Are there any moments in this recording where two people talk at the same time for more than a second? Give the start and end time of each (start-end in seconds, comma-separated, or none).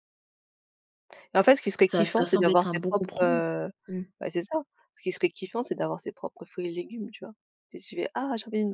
1.9-3.4